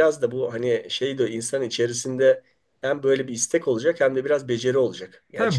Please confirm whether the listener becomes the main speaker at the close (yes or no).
yes